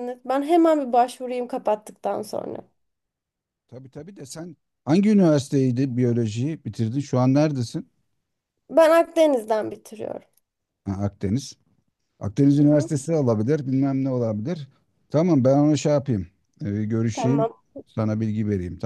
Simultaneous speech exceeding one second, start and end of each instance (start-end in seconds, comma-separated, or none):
none